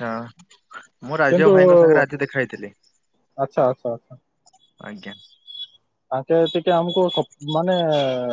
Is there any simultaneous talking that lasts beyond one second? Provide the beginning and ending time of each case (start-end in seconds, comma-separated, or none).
none